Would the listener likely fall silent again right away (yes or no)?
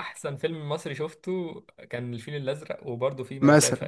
no